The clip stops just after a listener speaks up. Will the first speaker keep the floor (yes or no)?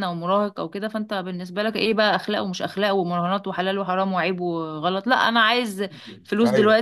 yes